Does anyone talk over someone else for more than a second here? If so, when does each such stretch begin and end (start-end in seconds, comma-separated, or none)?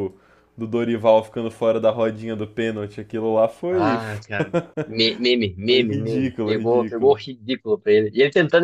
5.7-7.2